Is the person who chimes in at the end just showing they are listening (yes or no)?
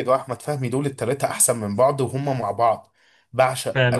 yes